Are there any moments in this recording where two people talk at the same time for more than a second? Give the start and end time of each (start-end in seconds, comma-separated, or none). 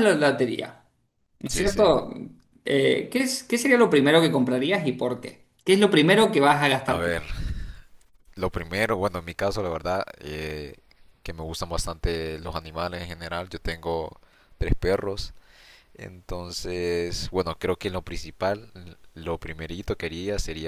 none